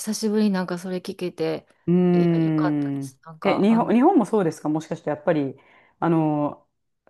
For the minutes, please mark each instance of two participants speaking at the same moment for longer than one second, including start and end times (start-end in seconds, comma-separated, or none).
2.1-3.9